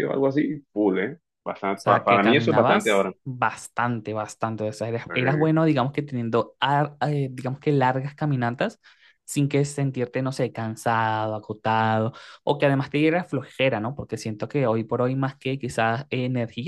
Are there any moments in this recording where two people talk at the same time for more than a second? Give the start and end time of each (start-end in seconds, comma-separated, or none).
1.8-3.2